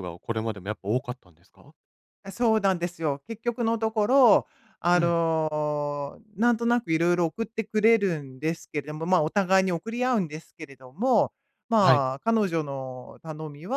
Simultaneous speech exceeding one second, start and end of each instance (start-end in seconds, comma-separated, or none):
none